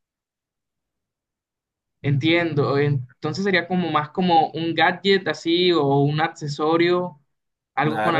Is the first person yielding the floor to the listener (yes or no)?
yes